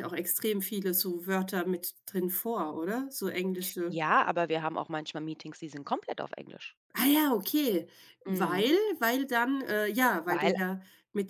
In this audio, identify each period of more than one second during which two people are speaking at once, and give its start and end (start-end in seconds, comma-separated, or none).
none